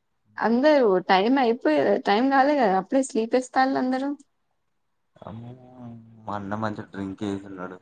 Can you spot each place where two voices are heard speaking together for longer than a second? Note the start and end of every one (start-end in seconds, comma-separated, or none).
none